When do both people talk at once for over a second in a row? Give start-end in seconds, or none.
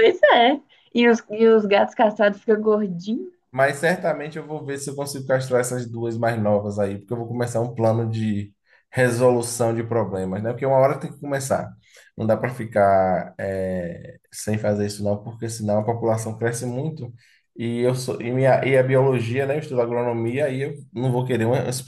none